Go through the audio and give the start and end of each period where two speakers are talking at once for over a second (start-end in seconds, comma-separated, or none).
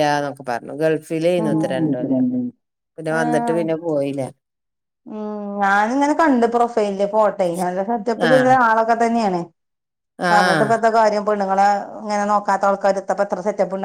none